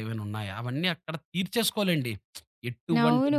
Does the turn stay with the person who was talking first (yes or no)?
no